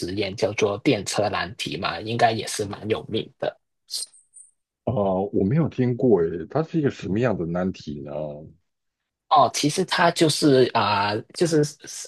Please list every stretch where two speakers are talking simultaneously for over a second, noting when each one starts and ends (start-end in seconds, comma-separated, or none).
none